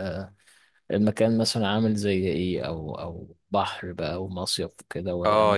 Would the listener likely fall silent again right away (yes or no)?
no